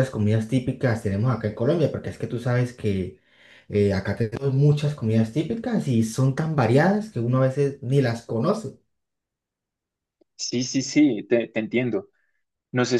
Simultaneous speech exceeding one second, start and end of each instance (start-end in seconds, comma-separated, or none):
none